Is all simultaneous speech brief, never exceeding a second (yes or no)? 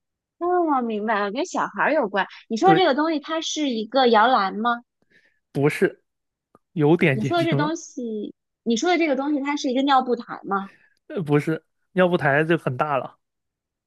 yes